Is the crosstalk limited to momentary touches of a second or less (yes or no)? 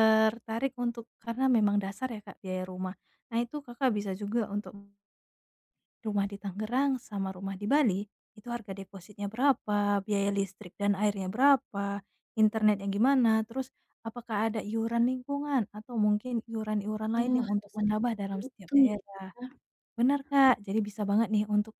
no